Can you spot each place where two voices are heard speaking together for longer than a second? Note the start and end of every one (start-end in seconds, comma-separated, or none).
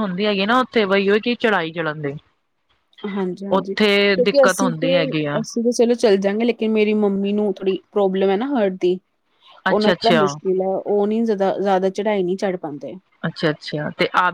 3.5-5.0